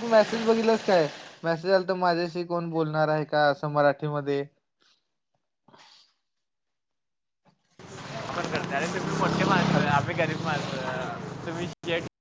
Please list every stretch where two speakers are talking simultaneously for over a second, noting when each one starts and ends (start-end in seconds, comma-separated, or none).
none